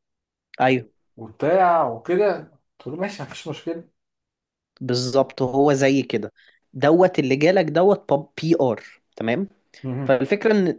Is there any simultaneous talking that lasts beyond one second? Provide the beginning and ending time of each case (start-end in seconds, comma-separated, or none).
none